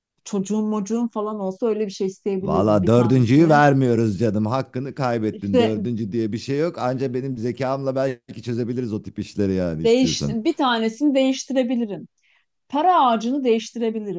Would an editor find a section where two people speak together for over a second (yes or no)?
yes